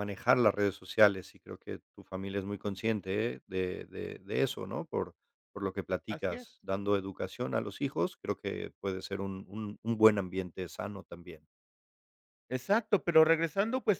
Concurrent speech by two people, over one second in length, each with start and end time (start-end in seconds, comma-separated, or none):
none